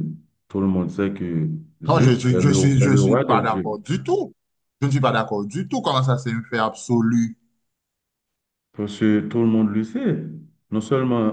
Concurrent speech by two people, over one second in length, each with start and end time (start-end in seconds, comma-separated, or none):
1.9-3.8